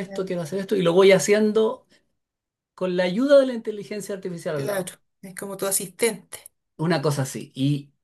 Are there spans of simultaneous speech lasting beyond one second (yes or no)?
no